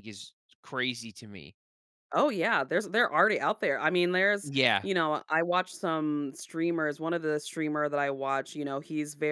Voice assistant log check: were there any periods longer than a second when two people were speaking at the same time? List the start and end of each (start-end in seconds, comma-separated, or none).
none